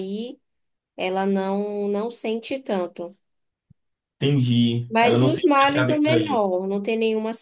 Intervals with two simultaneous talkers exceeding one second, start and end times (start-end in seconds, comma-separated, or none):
4.9-6.4